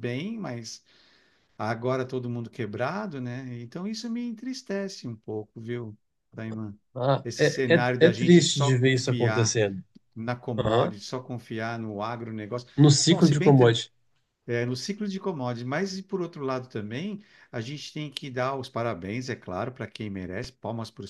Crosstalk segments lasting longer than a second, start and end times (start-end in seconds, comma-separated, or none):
7.2-9.6